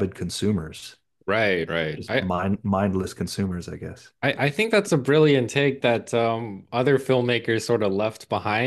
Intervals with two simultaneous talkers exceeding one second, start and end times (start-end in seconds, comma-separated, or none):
none